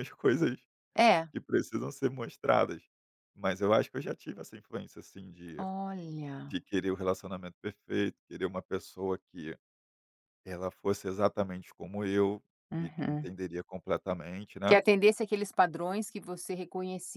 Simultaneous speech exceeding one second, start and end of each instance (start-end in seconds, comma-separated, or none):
none